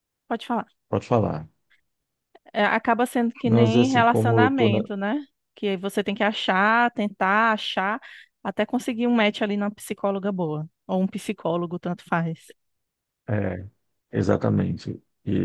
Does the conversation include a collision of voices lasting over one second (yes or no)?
yes